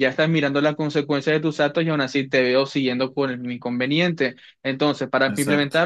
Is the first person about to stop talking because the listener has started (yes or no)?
no